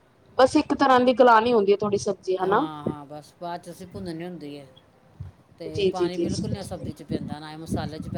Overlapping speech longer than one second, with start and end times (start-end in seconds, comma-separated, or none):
none